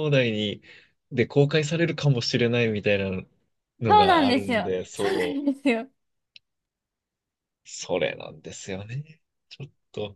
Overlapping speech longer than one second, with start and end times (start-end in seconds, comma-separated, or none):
3.9-5.5